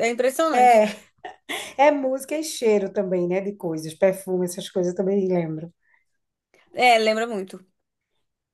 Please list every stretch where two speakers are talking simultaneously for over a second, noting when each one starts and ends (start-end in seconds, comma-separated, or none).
none